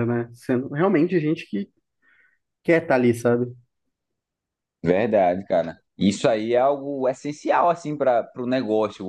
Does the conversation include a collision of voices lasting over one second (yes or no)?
no